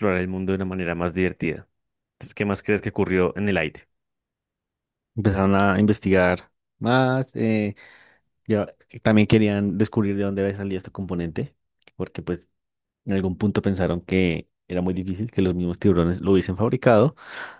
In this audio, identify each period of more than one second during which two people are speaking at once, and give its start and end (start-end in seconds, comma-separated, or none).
none